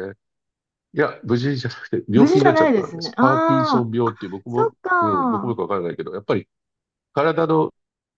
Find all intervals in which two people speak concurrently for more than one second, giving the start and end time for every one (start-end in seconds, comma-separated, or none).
2.1-5.6